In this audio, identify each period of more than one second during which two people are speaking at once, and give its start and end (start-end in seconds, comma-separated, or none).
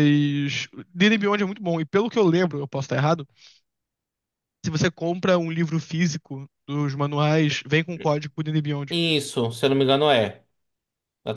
none